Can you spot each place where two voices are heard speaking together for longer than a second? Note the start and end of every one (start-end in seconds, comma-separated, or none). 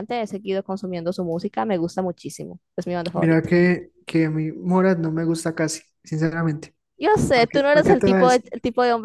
7.3-8.5